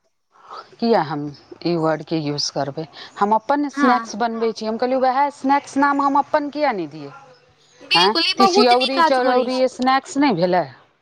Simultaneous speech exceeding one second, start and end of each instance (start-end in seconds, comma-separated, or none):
8.1-9.6